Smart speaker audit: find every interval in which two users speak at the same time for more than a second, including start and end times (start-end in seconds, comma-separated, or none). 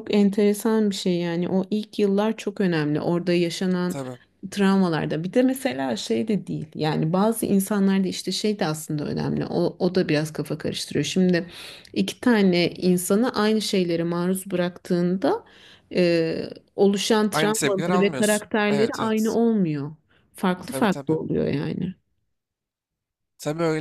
17.3-19.4